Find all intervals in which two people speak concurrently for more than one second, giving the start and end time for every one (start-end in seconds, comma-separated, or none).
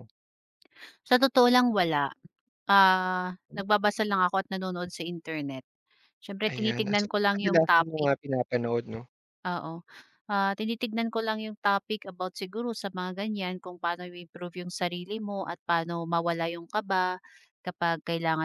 6.5-8.1